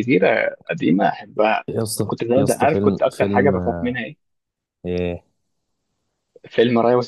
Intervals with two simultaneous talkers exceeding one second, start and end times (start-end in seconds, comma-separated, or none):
2.0-3.5